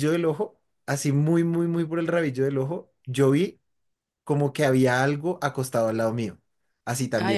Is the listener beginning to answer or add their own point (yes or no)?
no